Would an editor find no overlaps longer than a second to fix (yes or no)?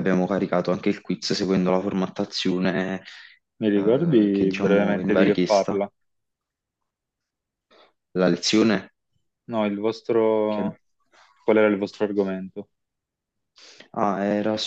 no